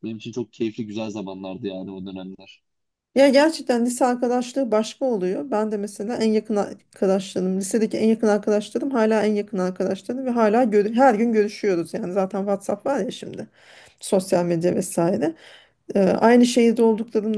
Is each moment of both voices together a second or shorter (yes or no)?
yes